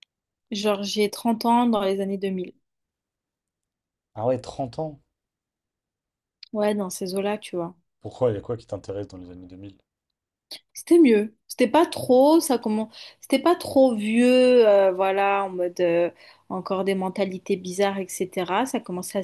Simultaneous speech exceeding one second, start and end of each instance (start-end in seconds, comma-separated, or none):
none